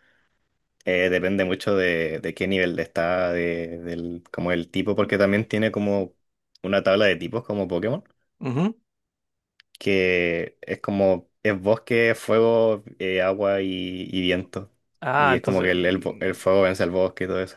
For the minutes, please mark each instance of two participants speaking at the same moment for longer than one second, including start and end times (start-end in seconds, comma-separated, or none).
15.2-16.4